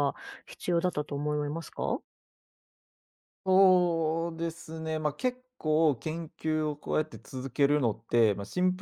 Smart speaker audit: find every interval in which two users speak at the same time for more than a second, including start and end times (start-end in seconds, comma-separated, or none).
none